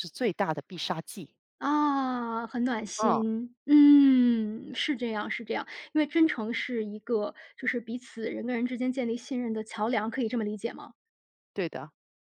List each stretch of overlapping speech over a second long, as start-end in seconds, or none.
none